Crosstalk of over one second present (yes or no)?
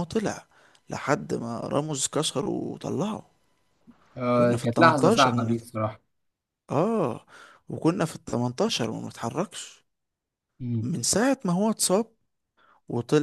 yes